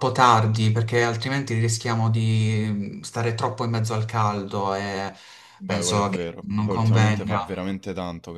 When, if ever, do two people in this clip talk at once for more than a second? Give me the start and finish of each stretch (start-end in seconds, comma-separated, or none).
5.7-7.4